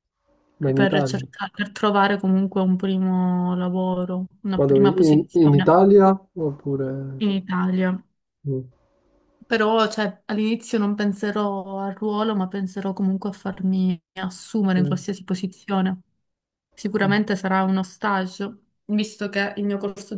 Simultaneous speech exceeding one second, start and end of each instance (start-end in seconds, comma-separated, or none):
4.6-5.8